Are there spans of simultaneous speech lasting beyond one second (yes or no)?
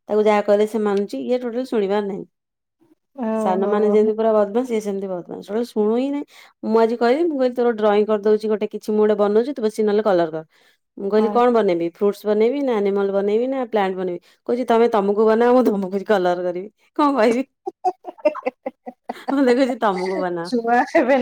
no